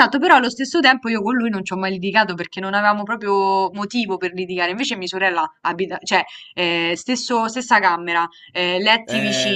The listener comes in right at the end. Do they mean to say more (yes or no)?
yes